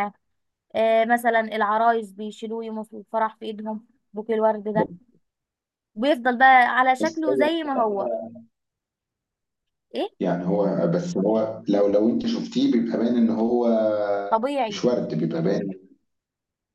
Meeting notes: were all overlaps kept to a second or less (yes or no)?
yes